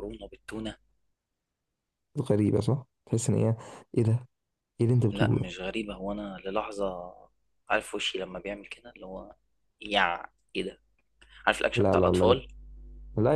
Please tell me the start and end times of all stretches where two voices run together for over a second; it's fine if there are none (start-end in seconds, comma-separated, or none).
none